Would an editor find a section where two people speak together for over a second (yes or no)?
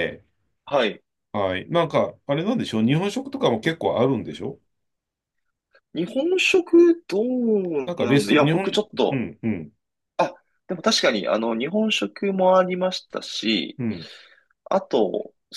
yes